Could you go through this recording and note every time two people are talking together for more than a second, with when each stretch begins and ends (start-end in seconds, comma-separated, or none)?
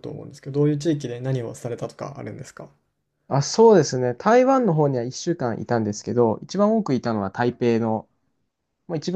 none